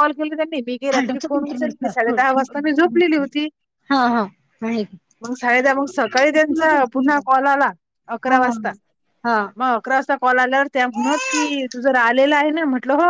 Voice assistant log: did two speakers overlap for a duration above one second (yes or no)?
yes